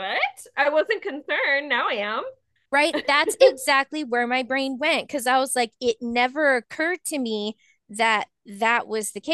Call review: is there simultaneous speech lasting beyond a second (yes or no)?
no